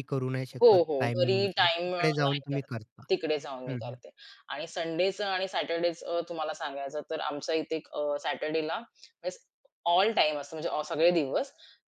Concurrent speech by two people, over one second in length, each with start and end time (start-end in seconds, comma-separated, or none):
0.6-2.7